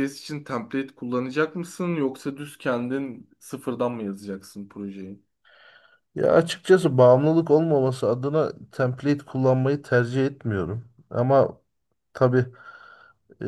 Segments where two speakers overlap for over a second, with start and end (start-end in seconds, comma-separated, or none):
none